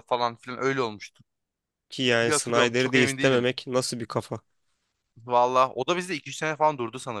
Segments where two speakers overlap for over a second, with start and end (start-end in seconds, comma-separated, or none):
2.2-3.5